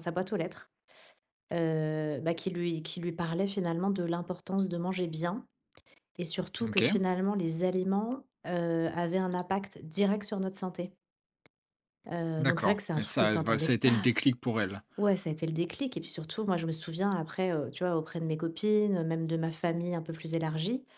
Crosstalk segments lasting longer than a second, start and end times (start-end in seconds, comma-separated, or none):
12.4-14.2